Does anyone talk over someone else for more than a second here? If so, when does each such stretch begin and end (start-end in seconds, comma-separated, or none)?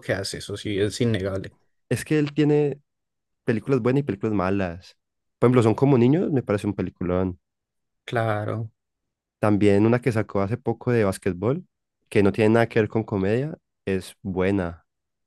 none